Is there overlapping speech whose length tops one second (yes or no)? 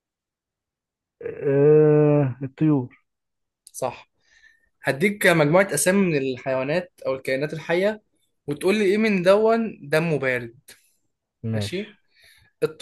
no